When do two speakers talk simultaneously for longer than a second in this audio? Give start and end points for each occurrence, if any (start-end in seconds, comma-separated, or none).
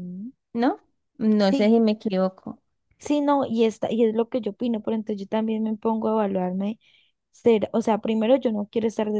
none